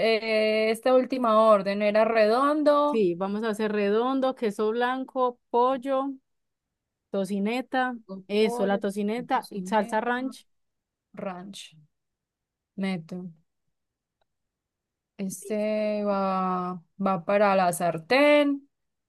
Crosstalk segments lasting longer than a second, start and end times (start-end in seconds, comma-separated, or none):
8.1-10.1